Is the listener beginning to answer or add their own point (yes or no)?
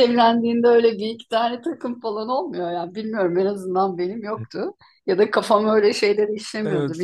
yes